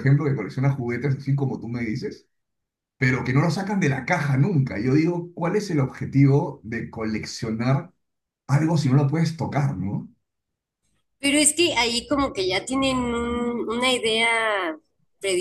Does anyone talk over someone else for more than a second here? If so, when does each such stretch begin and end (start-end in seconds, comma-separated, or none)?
none